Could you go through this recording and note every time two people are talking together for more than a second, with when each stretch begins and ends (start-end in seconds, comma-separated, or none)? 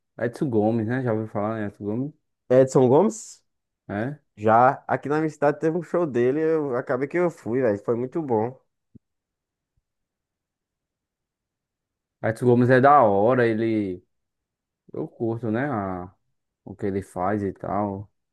none